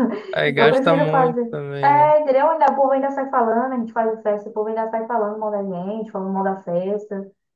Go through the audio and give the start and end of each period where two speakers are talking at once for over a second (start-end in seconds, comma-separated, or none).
0.6-2.1